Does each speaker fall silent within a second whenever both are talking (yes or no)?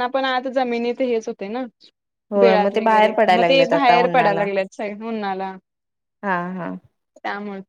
no